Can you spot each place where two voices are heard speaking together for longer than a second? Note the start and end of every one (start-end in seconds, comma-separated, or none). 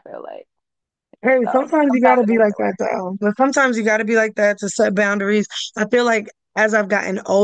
1.4-2.8